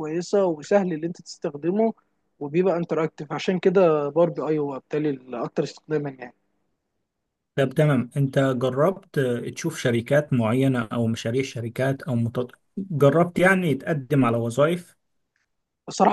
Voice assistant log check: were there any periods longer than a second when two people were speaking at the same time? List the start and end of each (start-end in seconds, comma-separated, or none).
none